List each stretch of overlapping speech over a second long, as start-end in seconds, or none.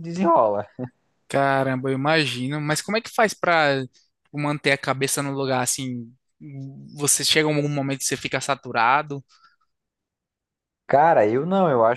none